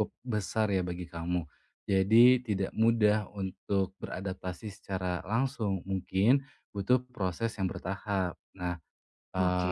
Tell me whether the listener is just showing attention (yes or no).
yes